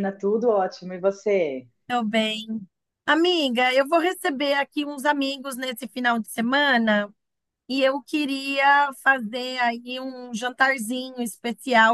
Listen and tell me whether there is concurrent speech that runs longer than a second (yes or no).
no